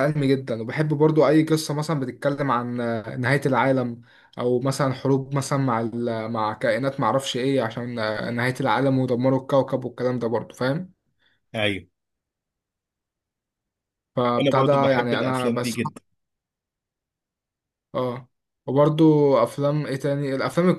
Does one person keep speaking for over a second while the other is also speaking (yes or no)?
yes